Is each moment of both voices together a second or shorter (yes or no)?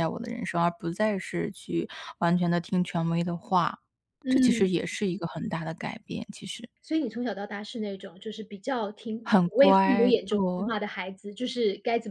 no